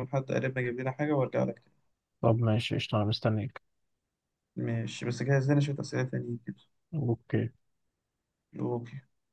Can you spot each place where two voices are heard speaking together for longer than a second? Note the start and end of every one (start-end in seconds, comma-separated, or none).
none